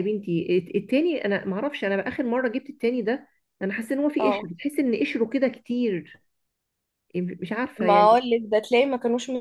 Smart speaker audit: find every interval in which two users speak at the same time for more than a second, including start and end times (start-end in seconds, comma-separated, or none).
none